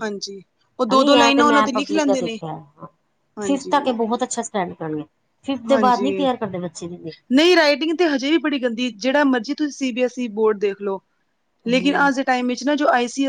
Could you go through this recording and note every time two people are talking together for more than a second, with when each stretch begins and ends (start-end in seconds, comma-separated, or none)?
0.9-2.4